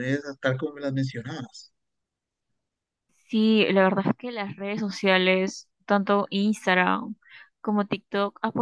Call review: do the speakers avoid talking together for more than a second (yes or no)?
yes